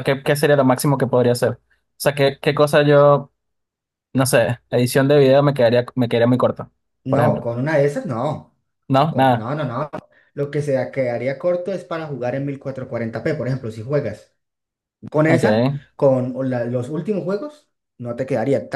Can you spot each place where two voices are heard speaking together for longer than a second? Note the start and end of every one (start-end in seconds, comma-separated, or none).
none